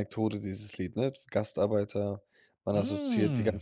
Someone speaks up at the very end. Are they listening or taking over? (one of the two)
listening